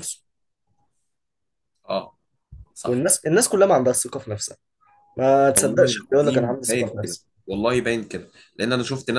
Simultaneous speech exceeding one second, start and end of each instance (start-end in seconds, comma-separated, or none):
5.5-7.3